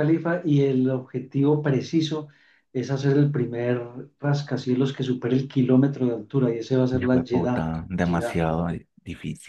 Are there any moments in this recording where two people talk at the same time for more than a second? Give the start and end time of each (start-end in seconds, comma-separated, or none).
6.9-8.4